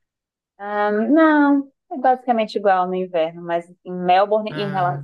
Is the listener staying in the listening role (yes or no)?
yes